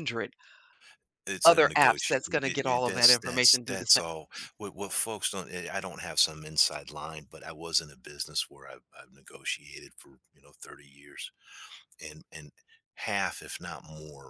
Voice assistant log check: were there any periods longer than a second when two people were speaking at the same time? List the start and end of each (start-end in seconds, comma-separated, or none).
1.4-4.0